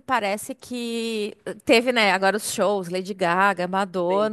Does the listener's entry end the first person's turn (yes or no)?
no